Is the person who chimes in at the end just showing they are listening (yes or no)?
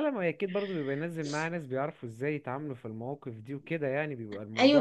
no